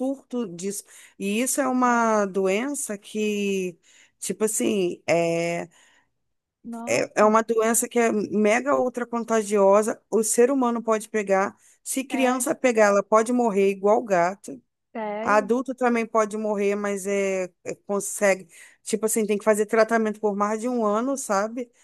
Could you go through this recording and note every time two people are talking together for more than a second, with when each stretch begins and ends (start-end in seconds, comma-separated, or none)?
none